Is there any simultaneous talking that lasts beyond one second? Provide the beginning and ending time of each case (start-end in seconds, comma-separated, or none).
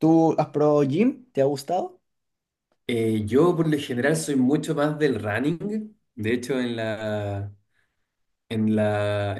none